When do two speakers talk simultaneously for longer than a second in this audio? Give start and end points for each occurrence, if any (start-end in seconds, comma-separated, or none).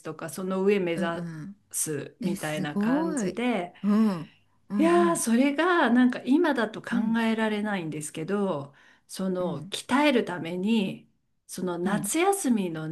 2.2-3.4